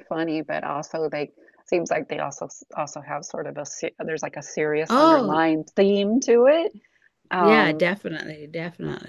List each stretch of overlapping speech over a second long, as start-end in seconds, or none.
none